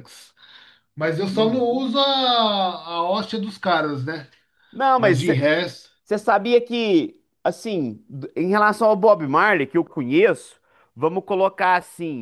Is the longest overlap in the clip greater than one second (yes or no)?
no